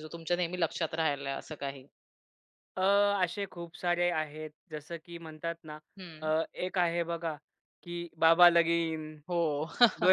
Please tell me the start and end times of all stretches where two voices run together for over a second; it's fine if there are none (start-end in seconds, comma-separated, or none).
none